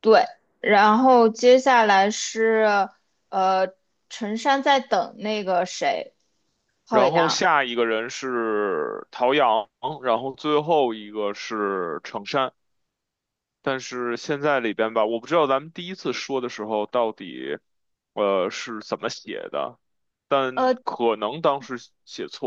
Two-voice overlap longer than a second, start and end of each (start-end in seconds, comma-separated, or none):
none